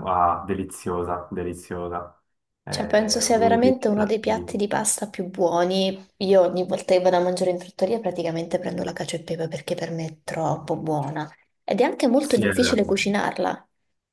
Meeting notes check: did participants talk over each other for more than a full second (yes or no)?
yes